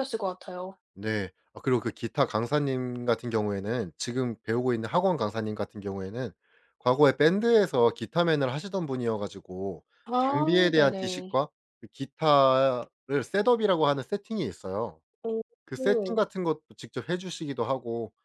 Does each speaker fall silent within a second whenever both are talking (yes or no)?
no